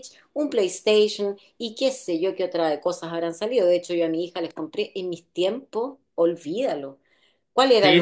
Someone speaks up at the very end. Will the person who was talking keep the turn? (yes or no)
yes